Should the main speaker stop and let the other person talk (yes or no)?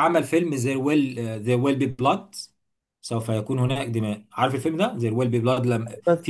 no